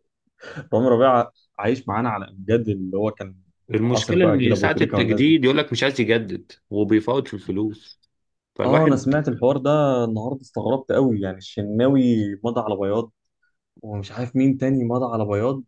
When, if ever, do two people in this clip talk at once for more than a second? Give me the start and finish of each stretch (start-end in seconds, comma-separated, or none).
3.9-5.4